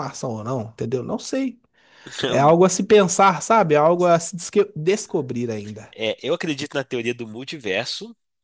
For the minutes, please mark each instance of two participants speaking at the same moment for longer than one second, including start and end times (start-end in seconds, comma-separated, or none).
none